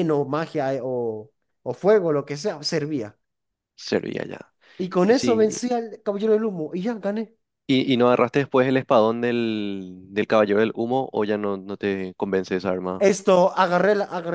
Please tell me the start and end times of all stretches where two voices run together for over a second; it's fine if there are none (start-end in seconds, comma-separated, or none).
none